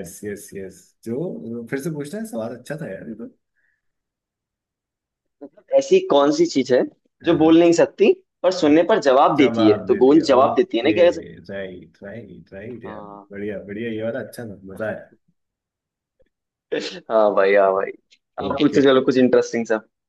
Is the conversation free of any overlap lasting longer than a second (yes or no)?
no